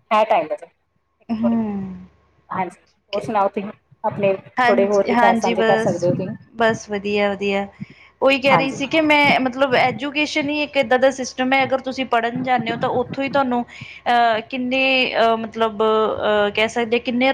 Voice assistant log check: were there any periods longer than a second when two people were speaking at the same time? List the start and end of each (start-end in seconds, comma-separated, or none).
4.6-6.1